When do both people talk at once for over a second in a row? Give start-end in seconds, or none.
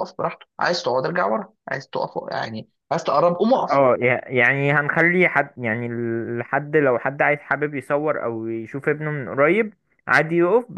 none